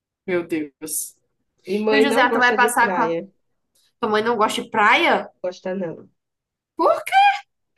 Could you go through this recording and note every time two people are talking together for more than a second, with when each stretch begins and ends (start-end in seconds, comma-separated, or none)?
1.9-3.2